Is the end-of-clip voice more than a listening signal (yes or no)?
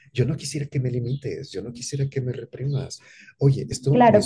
yes